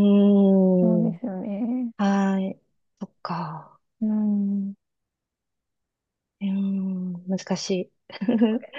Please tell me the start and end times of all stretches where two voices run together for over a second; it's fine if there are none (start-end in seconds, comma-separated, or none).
none